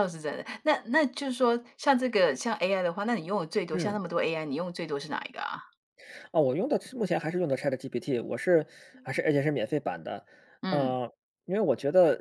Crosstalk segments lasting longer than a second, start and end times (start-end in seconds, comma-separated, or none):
none